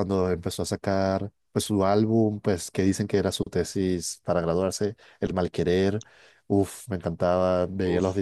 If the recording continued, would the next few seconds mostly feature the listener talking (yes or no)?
no